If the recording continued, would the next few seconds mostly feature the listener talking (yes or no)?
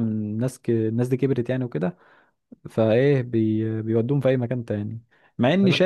no